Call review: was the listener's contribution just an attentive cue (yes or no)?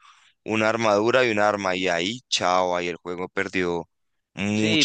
no